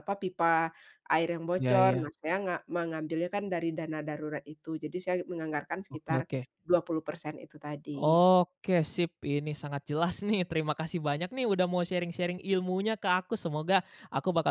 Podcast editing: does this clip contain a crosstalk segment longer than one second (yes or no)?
no